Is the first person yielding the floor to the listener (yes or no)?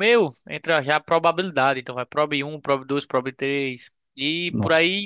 no